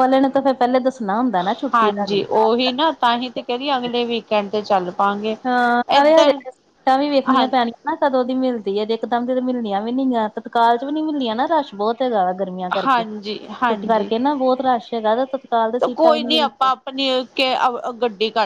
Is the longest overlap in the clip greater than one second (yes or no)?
yes